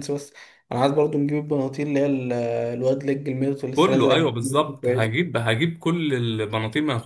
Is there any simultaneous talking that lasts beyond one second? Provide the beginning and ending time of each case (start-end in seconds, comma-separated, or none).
3.8-5.1